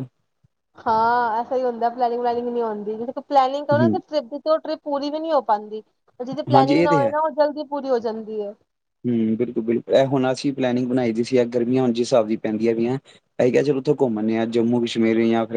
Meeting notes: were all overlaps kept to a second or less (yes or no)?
yes